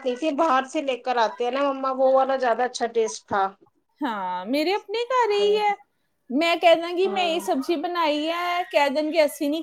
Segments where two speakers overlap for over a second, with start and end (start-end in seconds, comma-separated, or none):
none